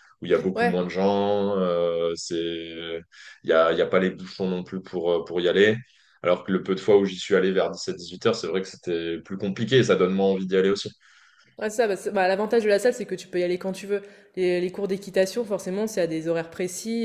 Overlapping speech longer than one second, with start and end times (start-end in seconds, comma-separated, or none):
none